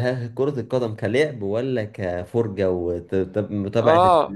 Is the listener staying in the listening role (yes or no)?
no